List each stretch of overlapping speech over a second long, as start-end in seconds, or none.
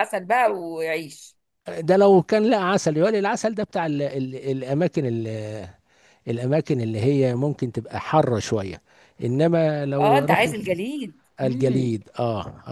none